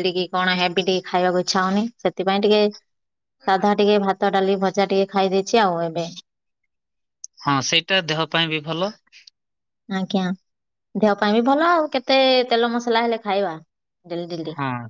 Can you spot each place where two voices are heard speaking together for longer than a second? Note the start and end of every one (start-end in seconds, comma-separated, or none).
none